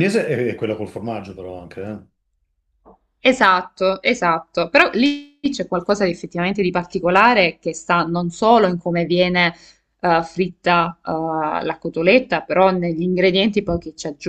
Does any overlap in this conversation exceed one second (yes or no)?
no